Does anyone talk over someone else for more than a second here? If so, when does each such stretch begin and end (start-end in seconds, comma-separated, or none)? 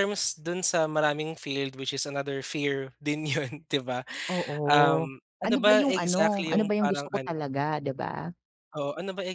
4.7-7.4